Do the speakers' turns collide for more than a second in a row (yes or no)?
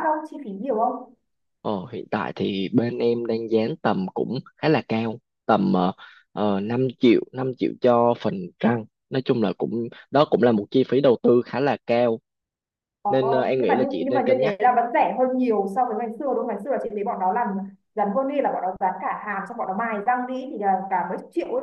yes